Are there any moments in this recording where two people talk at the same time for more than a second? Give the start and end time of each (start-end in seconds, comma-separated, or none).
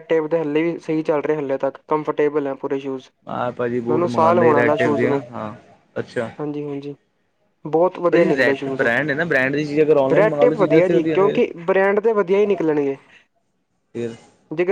3.9-5.2